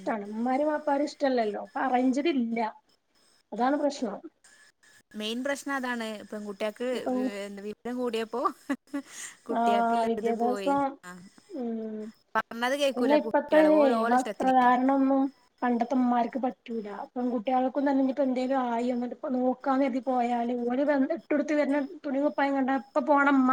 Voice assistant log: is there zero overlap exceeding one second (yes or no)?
no